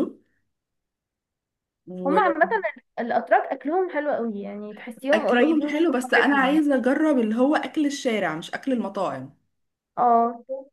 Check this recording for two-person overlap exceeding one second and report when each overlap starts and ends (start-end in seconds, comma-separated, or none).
5.1-6.6